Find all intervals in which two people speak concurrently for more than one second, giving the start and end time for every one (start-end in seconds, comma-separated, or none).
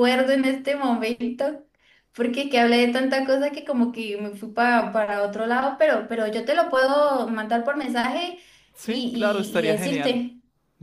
8.8-10.3